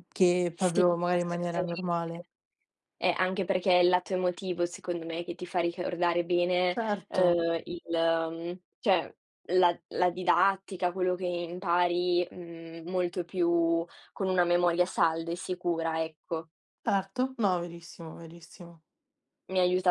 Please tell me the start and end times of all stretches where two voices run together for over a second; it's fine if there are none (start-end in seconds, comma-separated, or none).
0.5-2.3